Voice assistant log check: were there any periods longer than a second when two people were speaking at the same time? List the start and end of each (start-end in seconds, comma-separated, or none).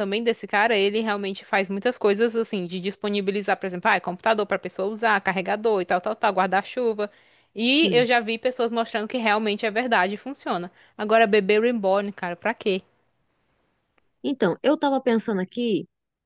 none